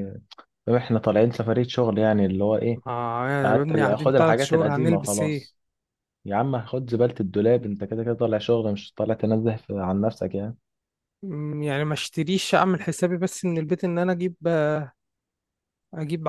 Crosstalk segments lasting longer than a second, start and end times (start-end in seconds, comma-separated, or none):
3.4-5.5